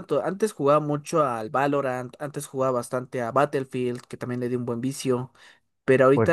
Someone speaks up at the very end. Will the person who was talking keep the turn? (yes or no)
yes